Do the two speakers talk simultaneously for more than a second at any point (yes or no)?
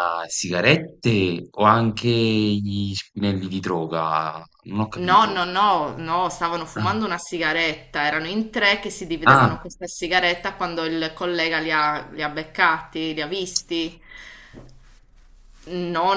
no